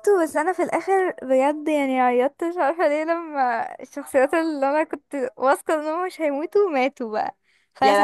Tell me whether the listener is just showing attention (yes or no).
yes